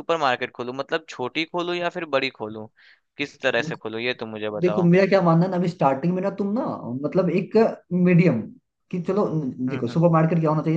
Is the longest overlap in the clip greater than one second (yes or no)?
no